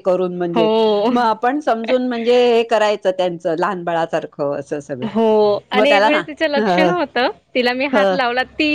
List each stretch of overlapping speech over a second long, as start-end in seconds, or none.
none